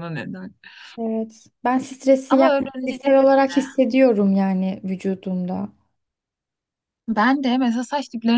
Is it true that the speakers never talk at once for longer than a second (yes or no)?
no